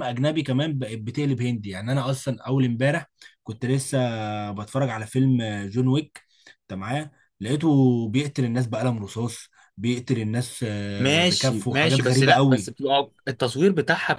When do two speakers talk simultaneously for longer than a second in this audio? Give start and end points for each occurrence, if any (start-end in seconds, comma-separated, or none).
11.0-12.7